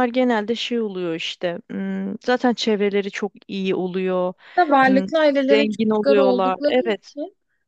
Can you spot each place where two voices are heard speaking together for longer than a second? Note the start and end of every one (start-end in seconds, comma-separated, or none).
4.9-7.1